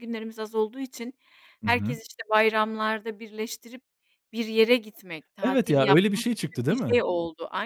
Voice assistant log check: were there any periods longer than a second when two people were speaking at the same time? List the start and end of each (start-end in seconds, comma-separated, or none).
5.4-7.0